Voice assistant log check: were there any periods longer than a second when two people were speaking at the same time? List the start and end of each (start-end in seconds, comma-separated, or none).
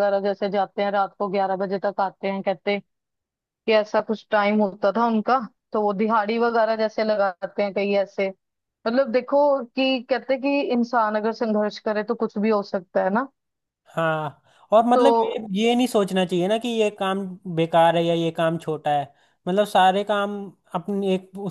none